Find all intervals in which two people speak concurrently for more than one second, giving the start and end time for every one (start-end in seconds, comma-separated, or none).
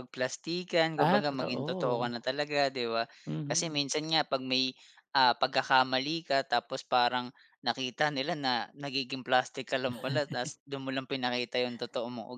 0.9-2.3